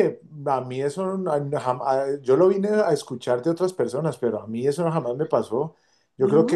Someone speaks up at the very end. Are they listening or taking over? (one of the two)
listening